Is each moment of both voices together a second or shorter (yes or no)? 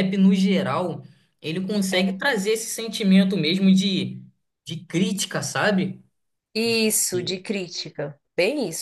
yes